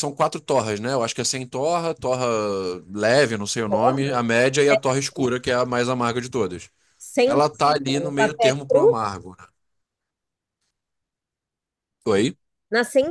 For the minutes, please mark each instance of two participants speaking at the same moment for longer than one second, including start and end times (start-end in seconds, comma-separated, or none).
7.2-9.0